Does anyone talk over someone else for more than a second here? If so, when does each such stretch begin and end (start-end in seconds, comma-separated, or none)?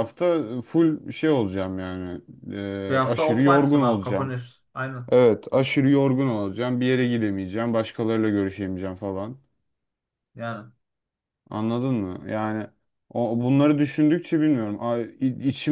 2.9-4.3